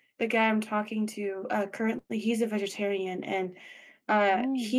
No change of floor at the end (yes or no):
yes